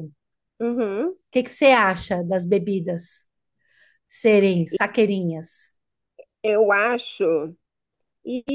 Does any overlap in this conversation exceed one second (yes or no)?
no